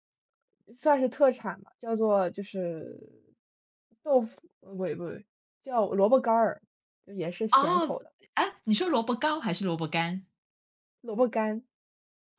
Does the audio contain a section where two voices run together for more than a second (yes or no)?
no